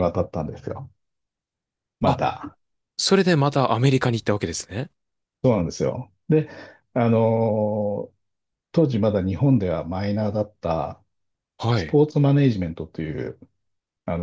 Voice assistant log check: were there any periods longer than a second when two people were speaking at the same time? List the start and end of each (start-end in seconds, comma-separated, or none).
none